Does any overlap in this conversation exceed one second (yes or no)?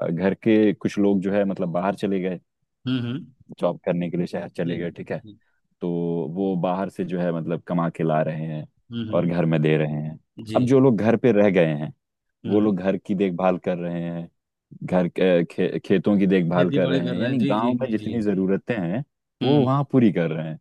yes